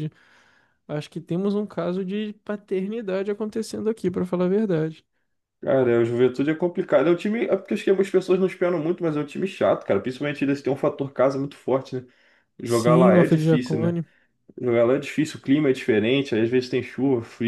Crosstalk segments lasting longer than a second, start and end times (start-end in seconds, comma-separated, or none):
12.6-13.9